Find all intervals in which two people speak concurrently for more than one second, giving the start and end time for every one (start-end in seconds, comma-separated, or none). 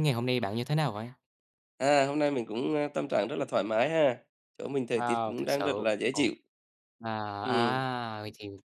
4.9-6.3